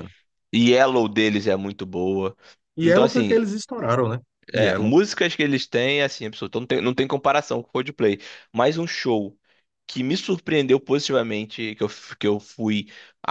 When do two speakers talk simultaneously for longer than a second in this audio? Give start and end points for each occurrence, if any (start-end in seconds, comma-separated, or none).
none